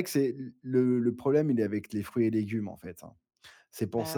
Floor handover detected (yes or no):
no